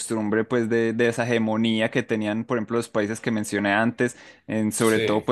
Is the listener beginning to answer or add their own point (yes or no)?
no